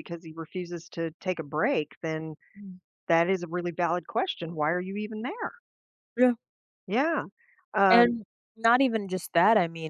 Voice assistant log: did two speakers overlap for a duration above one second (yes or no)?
no